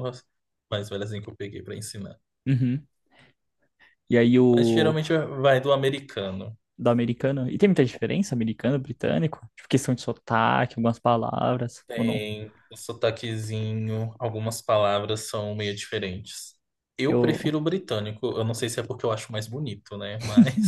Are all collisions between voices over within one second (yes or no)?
yes